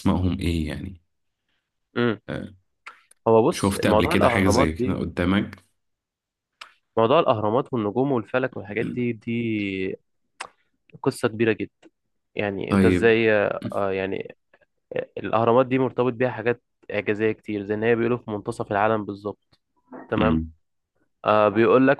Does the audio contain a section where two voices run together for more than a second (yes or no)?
yes